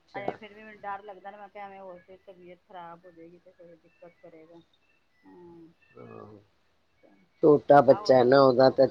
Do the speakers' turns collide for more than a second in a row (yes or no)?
no